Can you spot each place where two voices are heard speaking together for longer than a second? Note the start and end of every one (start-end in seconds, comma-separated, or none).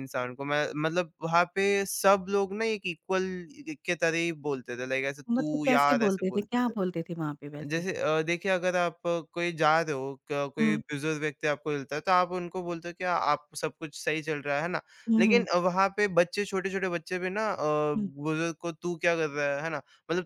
5.3-6.7